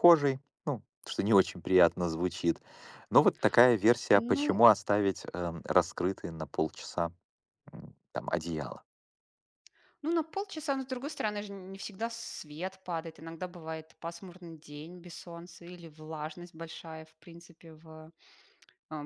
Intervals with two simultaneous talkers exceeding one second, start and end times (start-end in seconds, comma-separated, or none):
none